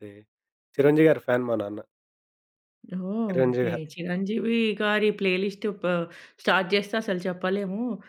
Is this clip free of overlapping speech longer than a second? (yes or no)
yes